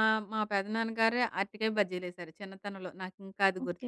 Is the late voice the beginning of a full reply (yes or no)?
yes